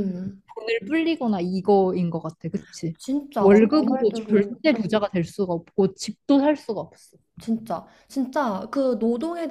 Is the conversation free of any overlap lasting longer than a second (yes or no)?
no